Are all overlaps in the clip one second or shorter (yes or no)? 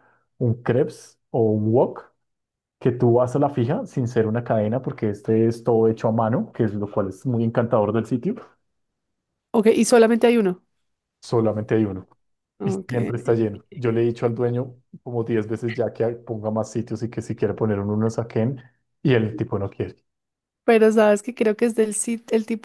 yes